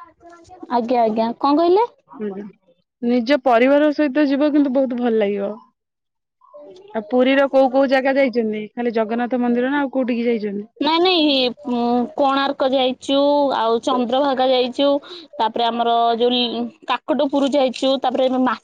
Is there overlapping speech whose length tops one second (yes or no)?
no